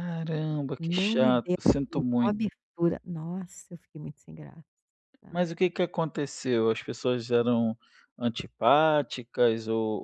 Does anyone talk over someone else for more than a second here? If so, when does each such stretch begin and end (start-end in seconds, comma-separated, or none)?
0.8-2.3